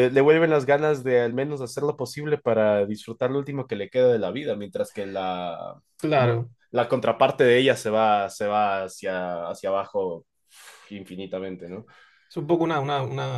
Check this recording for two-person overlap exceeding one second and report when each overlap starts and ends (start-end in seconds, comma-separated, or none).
none